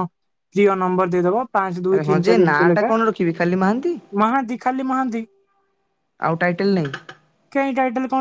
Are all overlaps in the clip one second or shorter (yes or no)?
yes